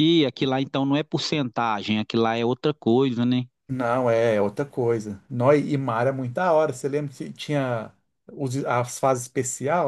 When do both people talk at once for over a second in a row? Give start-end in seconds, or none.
none